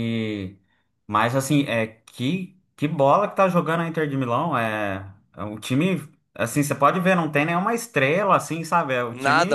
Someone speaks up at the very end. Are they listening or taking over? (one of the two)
taking over